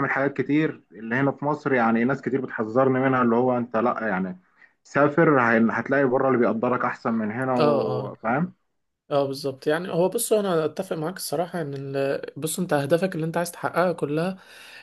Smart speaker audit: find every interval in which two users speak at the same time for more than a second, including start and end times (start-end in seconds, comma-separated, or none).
none